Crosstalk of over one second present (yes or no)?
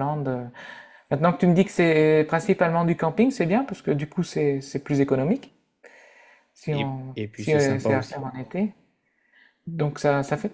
yes